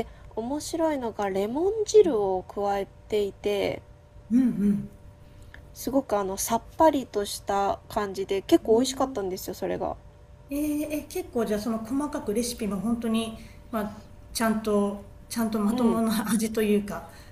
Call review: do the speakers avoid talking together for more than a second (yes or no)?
yes